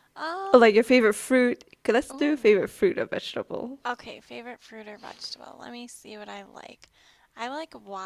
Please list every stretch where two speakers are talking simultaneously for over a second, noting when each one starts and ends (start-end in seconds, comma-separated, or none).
none